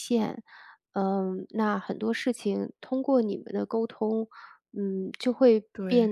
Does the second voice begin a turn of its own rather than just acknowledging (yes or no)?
no